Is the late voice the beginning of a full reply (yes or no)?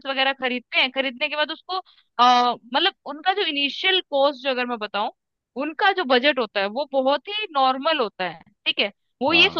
no